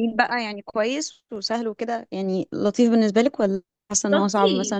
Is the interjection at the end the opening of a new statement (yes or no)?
yes